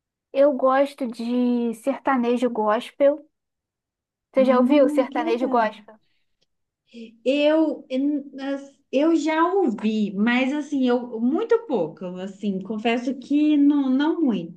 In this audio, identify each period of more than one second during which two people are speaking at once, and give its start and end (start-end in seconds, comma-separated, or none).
4.4-5.7